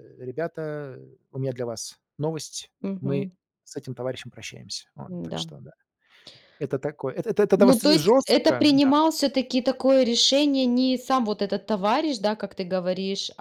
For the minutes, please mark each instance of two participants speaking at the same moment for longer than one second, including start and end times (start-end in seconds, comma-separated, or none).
7.6-8.9